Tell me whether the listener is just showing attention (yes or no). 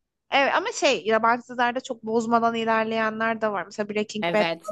no